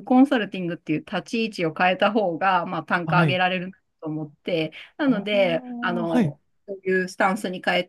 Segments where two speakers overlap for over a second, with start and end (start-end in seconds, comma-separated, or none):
5.0-6.4